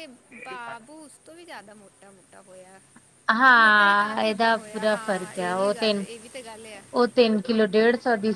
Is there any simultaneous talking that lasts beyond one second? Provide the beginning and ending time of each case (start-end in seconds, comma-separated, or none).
3.6-5.9